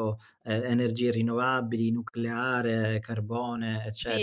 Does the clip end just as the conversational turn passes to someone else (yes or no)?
yes